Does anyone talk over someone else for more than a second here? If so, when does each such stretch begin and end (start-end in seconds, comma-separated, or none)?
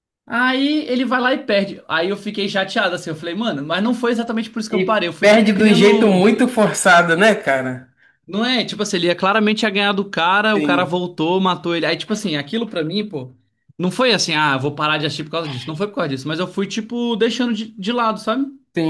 4.7-6.2